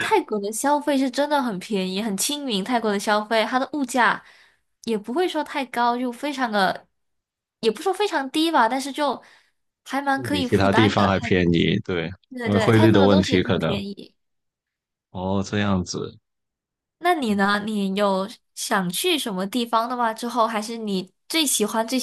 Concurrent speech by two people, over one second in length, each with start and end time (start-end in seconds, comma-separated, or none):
10.2-11.4, 12.4-13.8